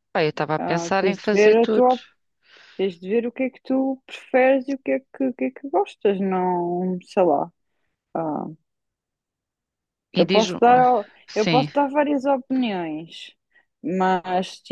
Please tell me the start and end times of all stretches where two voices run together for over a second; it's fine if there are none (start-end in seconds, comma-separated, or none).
0.6-1.9